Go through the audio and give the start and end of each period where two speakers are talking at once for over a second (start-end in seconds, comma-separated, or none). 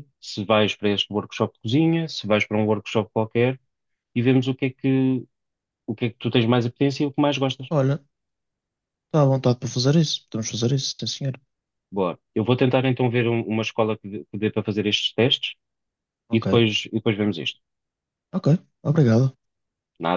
none